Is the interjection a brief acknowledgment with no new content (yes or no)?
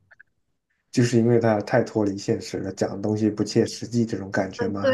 no